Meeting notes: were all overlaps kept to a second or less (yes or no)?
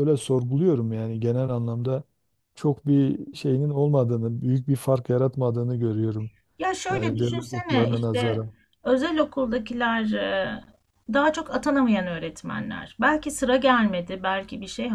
no